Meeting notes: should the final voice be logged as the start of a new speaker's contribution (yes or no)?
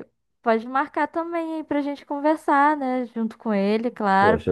yes